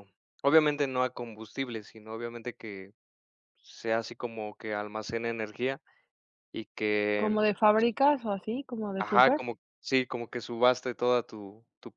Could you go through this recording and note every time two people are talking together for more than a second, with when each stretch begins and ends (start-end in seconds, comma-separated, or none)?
none